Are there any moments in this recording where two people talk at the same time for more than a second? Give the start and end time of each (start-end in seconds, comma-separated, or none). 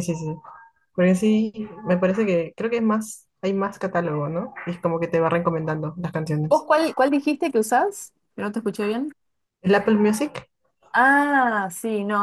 none